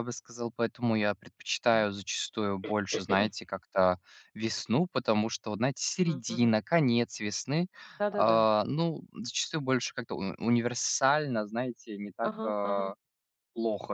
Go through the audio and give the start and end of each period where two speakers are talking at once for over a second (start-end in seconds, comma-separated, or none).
none